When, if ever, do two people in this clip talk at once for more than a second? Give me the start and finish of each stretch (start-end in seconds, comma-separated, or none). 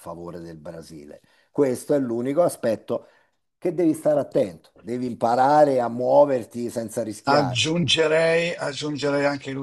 none